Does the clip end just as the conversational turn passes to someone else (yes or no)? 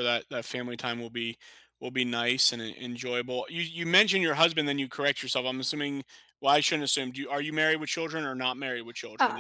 yes